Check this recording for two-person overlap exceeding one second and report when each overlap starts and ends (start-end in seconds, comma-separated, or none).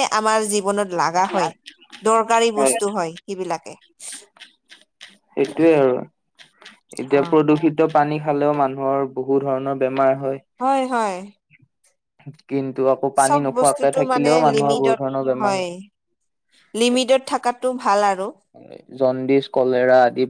13.2-15.0